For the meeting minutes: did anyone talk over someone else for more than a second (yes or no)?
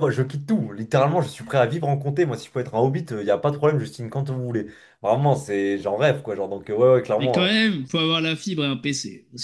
no